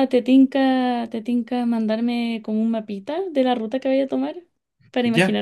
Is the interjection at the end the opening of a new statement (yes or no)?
yes